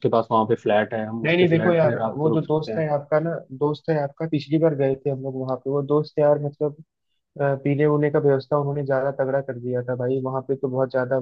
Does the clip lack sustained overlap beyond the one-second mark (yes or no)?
no